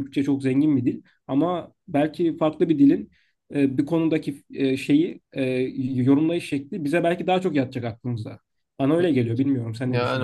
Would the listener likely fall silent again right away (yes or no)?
no